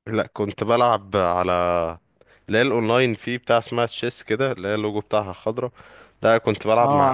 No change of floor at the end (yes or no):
yes